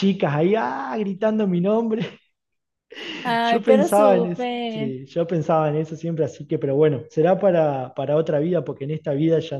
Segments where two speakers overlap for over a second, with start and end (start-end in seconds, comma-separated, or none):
3.4-5.0